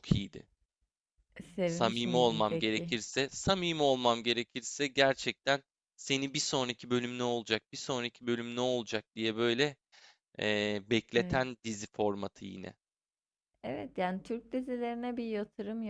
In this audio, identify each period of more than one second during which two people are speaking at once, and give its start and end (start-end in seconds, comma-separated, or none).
1.6-3.0